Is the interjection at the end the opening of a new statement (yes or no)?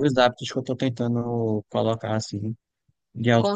yes